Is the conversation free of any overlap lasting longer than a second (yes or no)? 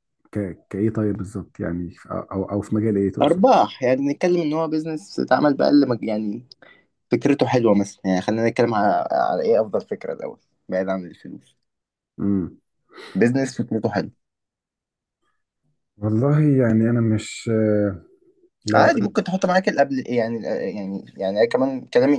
yes